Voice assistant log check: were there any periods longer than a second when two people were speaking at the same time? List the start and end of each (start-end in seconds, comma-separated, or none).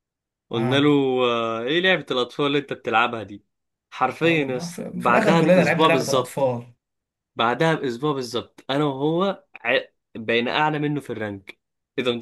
4.2-6.5